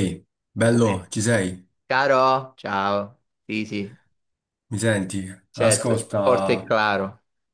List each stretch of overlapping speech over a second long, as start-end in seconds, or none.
5.5-6.7